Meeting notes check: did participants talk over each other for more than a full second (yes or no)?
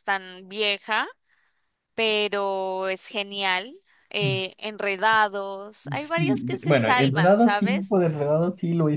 yes